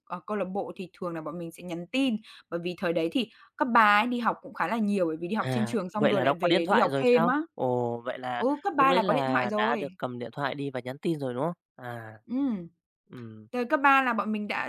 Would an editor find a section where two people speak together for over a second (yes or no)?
yes